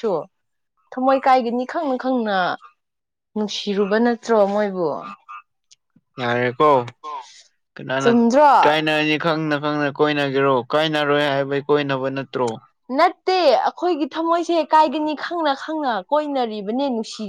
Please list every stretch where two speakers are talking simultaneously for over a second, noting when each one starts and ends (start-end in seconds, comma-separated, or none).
none